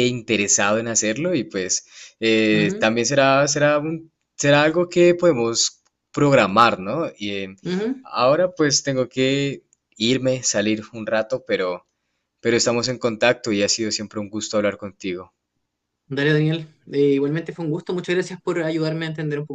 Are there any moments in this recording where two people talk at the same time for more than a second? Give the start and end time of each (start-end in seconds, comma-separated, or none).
none